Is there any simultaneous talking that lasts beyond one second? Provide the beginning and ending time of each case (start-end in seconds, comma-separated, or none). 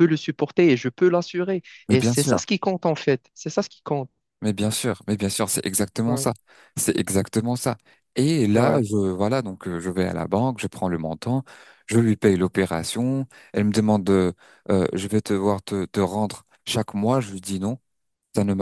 none